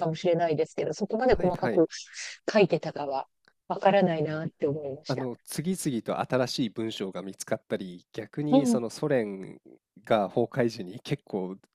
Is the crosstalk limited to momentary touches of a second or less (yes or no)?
yes